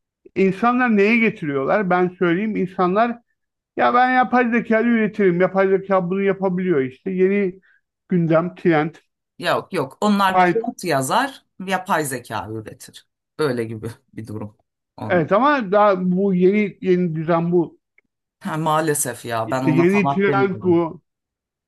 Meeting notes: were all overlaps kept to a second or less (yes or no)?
no